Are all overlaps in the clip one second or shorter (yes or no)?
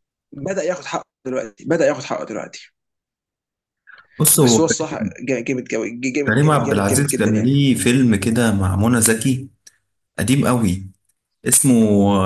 no